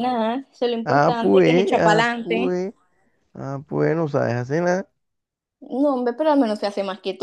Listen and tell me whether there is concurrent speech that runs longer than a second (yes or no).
yes